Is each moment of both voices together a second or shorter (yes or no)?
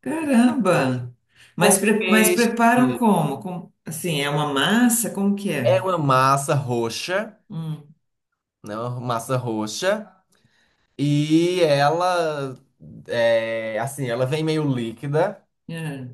no